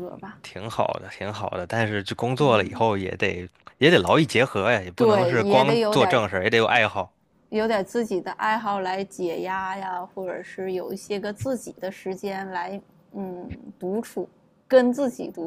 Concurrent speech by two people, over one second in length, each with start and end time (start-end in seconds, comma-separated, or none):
5.0-6.2